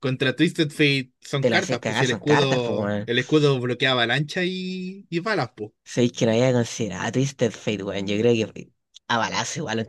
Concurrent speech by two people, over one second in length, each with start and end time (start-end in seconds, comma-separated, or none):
1.4-3.1